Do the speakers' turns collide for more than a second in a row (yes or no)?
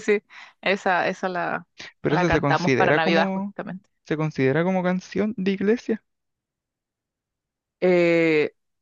yes